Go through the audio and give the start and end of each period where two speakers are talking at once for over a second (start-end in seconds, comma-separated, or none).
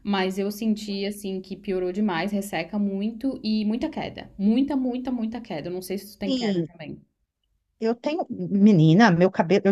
none